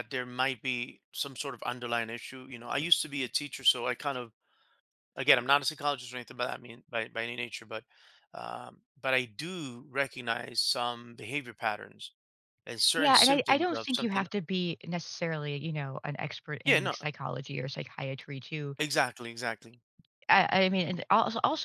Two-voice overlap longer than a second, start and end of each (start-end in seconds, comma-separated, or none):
13.0-14.3